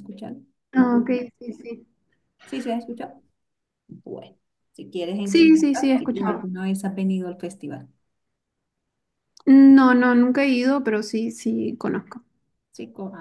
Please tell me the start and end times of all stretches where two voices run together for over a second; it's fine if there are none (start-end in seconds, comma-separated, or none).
5.2-6.4